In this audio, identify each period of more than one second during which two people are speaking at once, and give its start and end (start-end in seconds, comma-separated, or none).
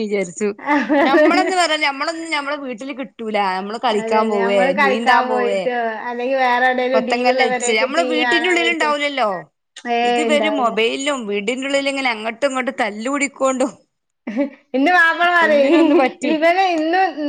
4.0-5.6, 6.9-8.9